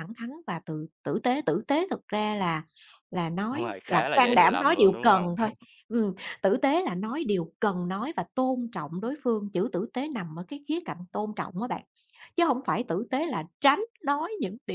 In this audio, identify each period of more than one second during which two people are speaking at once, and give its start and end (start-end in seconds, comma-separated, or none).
3.5-5.5